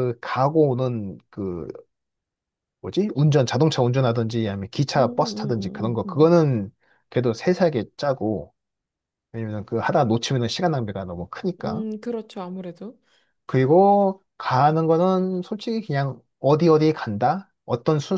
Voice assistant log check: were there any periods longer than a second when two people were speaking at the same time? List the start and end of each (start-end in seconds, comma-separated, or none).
5.0-6.3